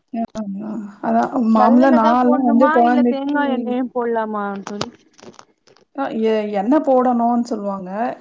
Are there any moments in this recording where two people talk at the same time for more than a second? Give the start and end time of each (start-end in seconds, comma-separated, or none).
1.6-3.3